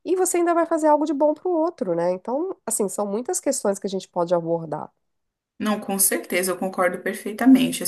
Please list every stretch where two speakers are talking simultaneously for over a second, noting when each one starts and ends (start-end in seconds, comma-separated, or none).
none